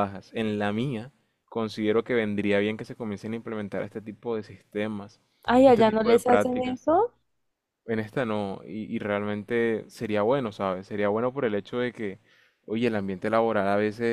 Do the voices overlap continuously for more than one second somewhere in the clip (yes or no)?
yes